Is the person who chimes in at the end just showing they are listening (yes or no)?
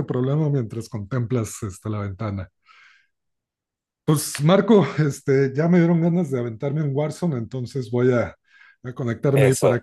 yes